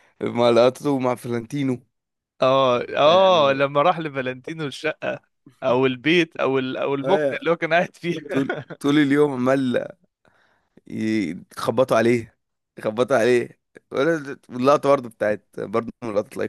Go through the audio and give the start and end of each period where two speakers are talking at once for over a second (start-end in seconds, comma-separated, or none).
none